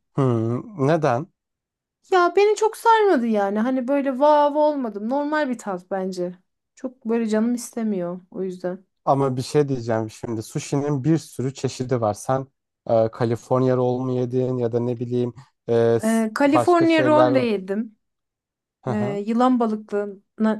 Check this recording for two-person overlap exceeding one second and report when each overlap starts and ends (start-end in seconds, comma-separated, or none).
16.0-17.4